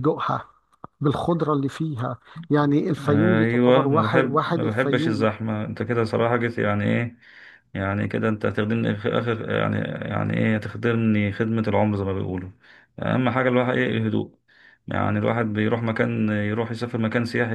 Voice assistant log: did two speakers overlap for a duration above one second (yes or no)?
yes